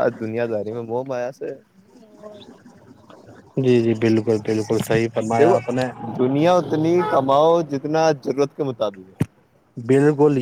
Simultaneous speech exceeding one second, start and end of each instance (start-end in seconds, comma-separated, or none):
none